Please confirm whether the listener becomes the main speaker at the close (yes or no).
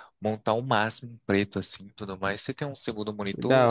yes